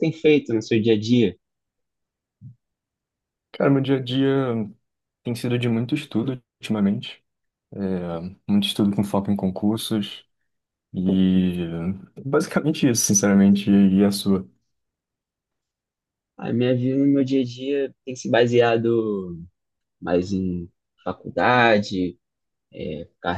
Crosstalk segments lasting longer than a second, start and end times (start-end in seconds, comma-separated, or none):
none